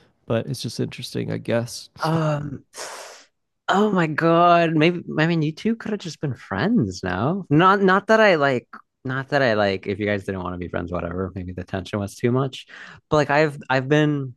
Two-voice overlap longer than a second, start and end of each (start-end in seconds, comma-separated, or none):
none